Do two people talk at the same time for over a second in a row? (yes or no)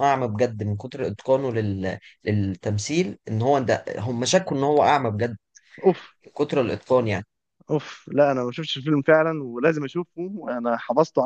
no